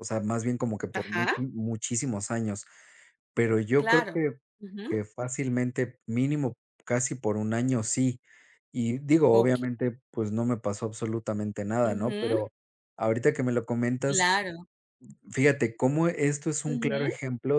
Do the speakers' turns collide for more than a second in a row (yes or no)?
no